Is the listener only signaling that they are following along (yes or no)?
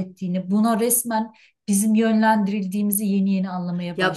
no